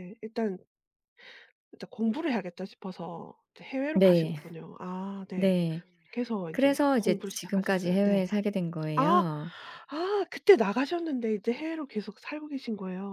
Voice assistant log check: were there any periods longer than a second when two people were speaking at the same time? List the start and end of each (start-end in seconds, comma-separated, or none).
6.5-8.3